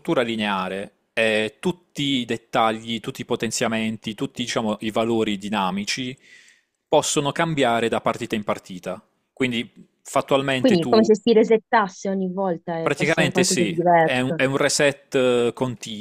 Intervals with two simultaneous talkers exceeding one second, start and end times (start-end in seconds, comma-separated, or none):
12.8-14.4